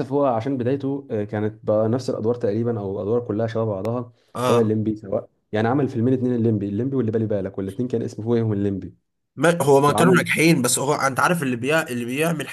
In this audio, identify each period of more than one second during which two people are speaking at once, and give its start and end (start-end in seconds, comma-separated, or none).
none